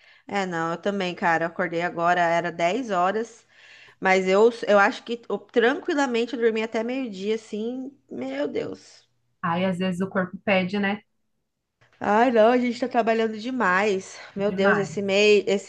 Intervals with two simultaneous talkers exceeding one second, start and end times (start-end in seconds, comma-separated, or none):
none